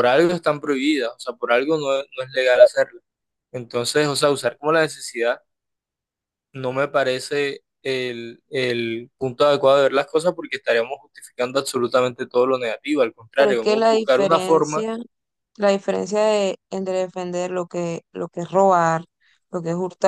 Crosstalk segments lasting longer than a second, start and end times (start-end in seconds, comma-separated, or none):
13.3-14.8